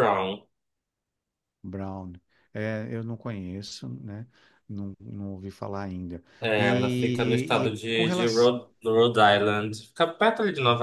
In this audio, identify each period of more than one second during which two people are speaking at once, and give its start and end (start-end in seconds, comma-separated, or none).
6.4-8.5